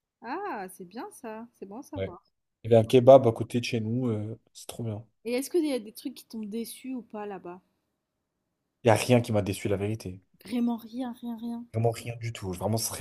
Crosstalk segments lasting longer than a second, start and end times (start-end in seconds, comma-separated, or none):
none